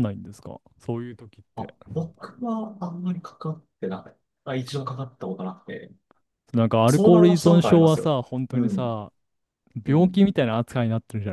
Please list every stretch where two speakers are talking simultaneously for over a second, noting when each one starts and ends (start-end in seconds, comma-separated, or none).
6.9-8.9